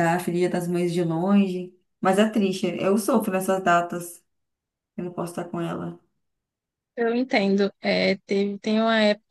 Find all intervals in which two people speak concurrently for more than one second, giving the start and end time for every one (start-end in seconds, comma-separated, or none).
none